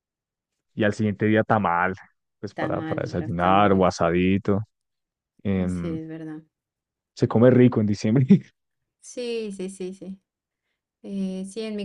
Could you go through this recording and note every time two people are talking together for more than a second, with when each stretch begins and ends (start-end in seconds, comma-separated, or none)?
2.5-3.9